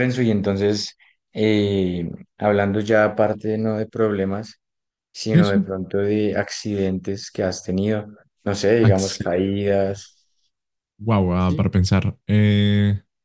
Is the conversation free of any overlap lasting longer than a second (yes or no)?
no